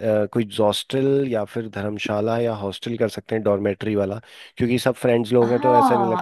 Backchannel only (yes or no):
no